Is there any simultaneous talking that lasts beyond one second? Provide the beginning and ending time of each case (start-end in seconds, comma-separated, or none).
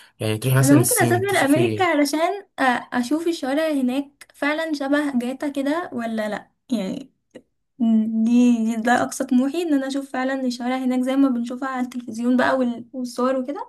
0.6-1.9